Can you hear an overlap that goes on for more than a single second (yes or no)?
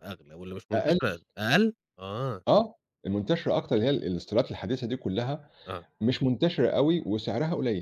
no